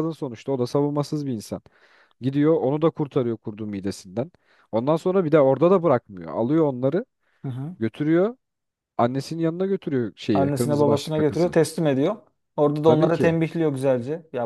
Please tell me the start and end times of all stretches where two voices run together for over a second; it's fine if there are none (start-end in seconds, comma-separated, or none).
10.3-11.6